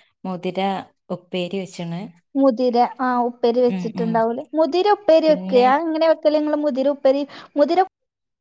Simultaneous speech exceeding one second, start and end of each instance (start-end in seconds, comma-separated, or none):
none